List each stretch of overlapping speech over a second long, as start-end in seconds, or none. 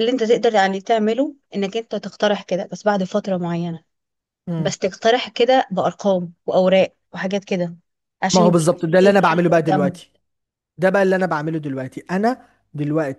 8.3-10.0